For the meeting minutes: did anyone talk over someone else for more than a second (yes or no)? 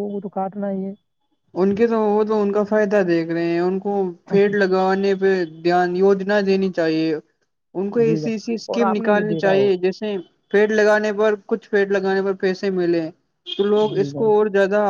yes